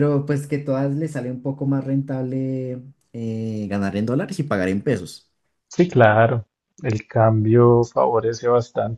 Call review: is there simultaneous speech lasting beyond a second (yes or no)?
no